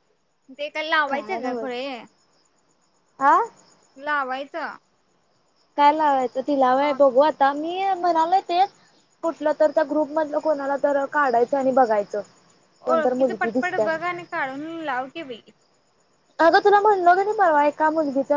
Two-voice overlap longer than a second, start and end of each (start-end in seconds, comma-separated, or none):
12.9-14.2